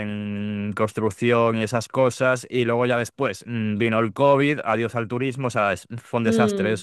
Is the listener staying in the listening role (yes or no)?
no